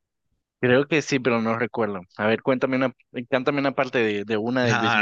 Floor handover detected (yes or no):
yes